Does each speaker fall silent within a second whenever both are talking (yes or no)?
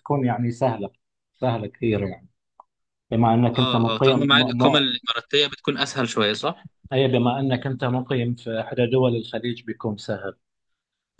no